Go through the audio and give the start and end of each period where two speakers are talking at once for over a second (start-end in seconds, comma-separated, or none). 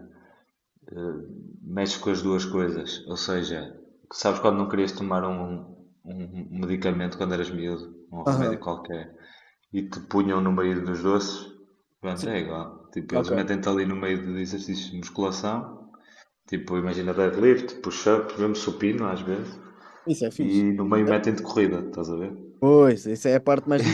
none